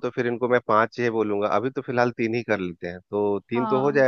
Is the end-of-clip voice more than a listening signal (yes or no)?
yes